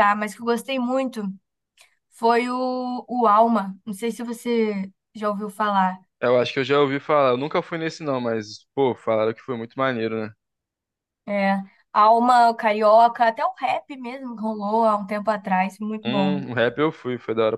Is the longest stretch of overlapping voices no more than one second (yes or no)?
yes